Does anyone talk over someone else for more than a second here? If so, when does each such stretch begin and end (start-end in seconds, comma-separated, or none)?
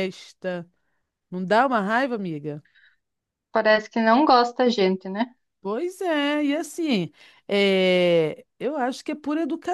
none